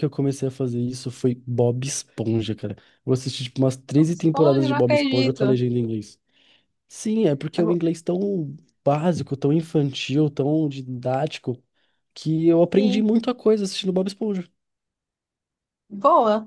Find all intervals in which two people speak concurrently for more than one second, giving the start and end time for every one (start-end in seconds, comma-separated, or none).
4.1-5.6